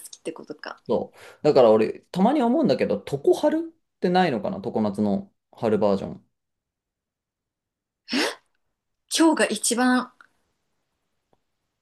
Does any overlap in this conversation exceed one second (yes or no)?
no